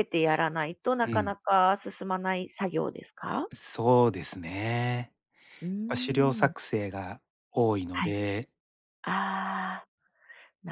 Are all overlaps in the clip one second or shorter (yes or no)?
yes